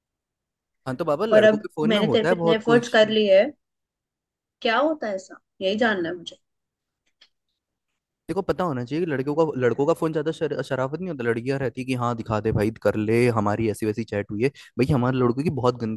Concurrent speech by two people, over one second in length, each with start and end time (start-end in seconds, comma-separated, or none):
1.3-3.0